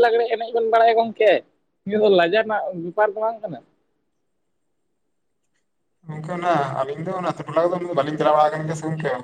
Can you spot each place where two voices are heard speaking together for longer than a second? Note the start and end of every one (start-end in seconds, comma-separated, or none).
none